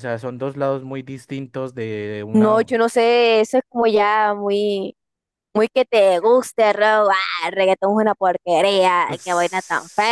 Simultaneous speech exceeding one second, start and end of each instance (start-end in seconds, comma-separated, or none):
none